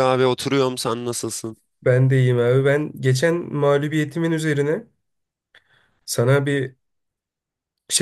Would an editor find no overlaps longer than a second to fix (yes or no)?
yes